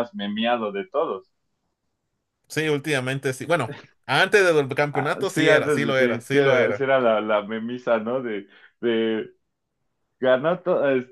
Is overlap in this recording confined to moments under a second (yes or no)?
no